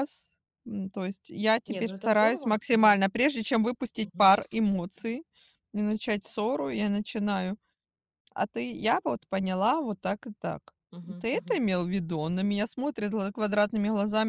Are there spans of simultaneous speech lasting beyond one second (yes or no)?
yes